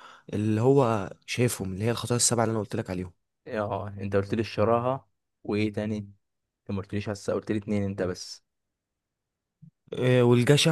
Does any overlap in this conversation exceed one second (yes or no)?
no